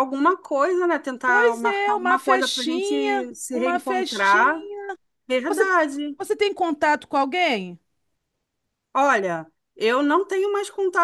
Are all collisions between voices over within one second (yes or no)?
no